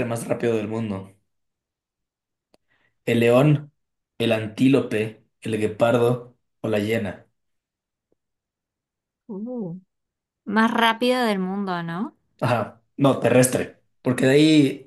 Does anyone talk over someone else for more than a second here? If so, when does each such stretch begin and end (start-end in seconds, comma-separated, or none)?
none